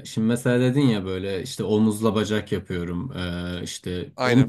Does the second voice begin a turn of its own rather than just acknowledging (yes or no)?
no